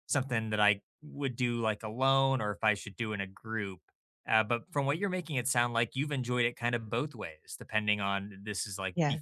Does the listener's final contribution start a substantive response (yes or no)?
no